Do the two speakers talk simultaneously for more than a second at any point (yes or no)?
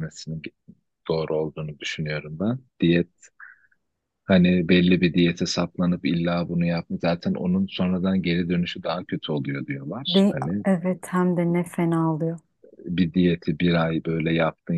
no